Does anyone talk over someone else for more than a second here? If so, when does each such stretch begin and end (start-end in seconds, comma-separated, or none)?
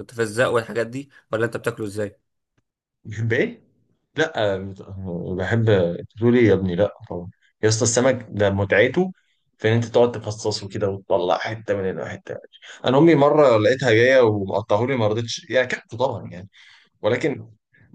none